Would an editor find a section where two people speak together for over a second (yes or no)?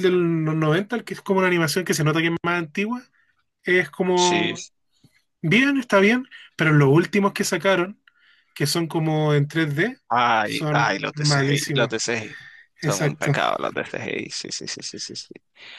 yes